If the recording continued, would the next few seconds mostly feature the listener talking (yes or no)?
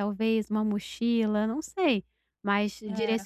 no